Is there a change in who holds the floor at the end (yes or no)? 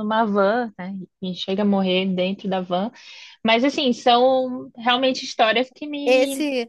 yes